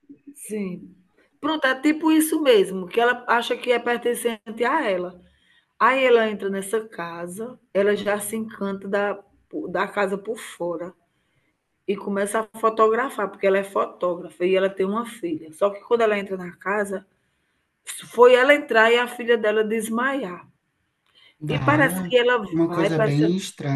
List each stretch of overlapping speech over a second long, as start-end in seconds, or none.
21.6-23.2